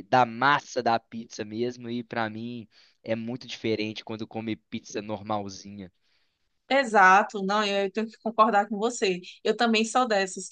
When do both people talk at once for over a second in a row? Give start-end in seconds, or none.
none